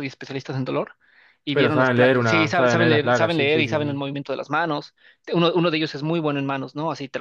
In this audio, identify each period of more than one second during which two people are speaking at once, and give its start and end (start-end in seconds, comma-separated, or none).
1.5-4.0